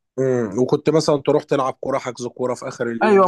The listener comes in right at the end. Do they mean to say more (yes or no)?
yes